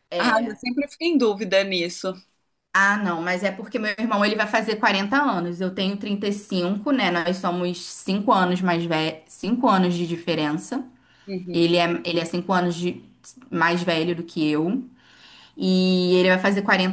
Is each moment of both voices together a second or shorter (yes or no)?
yes